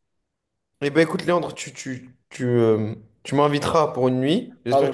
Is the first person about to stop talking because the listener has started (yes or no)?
no